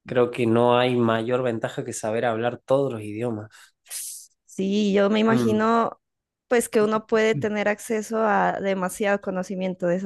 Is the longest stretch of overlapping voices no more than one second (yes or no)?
yes